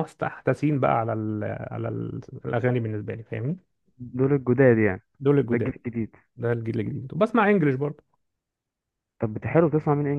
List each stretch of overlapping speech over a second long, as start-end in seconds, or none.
none